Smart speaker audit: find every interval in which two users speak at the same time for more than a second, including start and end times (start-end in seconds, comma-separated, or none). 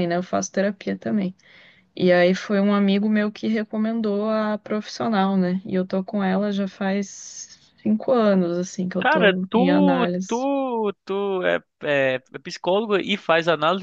9.0-10.4